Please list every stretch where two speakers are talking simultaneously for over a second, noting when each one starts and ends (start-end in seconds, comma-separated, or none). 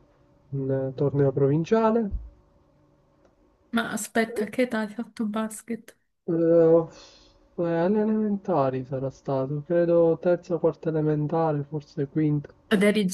none